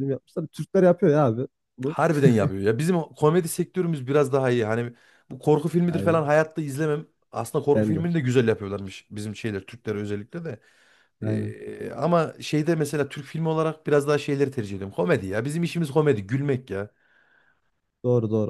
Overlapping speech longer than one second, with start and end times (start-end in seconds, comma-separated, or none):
none